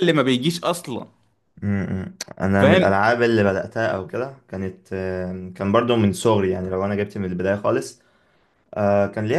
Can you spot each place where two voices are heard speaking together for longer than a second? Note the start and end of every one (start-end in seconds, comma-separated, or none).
none